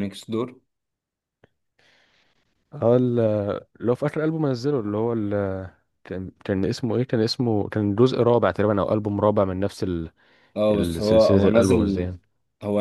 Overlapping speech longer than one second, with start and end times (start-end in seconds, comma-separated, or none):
10.7-12.1